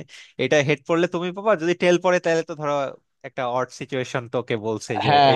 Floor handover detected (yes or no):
yes